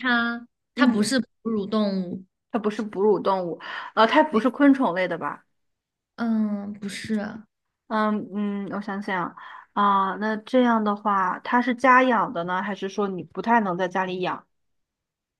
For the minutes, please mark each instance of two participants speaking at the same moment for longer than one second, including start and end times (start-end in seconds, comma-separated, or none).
none